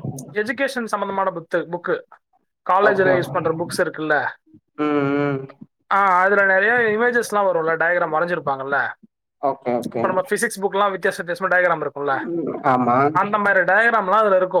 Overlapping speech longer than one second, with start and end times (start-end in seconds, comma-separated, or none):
none